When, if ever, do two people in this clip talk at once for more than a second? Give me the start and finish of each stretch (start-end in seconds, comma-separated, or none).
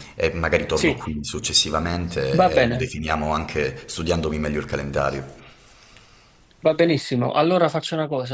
none